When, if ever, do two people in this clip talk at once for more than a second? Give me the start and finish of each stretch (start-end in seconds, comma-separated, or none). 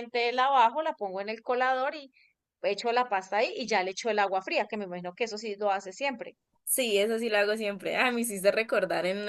none